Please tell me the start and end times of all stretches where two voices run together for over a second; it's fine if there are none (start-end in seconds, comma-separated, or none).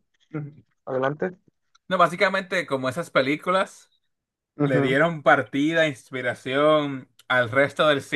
none